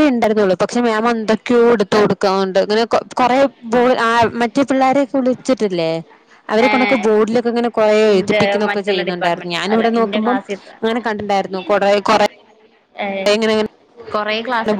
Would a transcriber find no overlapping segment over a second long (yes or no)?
no